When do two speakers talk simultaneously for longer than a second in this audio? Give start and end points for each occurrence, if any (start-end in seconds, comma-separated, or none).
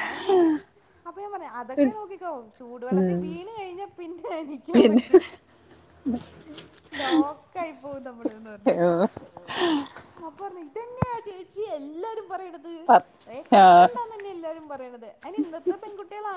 none